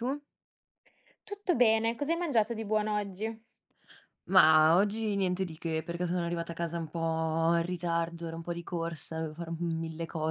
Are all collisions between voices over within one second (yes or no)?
yes